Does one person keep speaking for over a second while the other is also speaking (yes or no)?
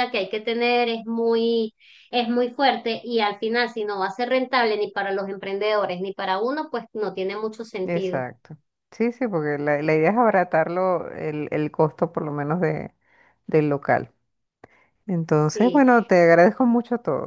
no